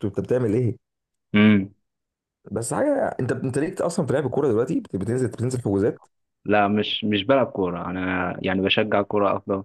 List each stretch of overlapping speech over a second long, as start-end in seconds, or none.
none